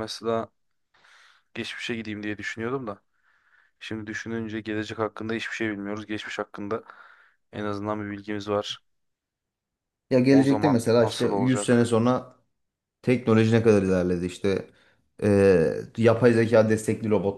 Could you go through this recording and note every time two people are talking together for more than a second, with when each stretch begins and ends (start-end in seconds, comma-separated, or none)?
10.3-12.0